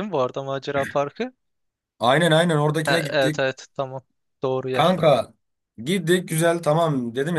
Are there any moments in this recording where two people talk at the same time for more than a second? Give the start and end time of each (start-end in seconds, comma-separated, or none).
none